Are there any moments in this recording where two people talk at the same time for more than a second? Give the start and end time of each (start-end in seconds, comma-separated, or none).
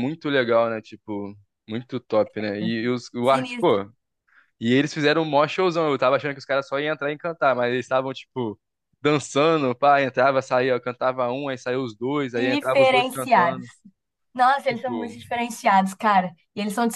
12.3-13.7